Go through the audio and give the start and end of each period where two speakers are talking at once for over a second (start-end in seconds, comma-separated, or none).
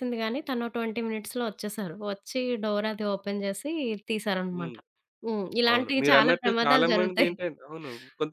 5.7-7.3